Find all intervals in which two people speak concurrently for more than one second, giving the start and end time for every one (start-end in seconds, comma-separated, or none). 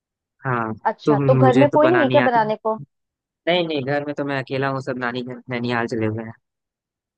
0.9-2.4